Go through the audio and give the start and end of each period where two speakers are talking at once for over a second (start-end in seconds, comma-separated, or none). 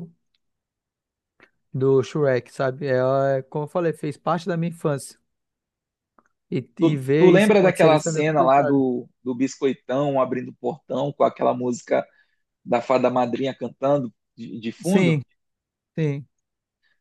6.8-8.8